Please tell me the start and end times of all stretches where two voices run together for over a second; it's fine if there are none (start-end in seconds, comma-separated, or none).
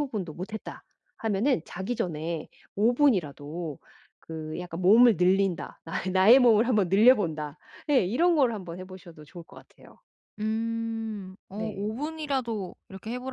none